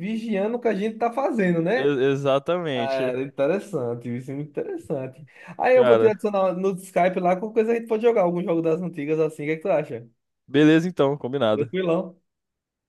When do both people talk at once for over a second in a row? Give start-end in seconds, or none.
none